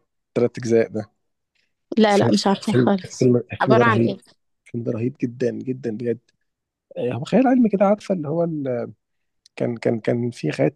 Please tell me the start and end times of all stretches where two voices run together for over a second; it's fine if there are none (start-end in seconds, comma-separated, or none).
2.1-4.2